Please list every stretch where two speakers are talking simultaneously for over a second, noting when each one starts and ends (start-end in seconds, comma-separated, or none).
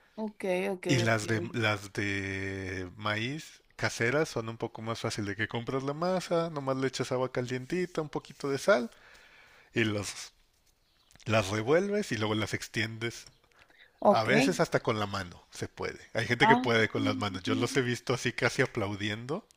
16.4-17.8